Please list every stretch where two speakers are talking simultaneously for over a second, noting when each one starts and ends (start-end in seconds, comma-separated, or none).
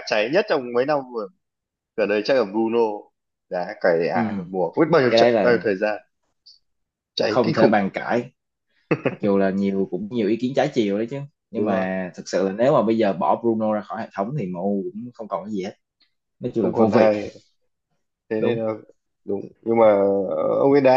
none